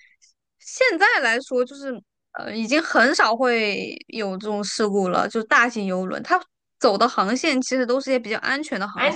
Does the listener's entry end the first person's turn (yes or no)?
yes